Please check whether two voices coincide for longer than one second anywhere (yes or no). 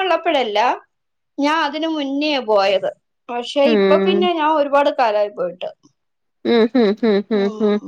no